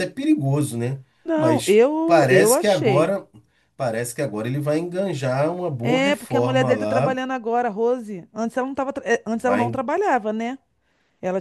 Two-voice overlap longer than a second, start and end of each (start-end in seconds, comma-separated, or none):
1.2-3.1, 5.8-7.2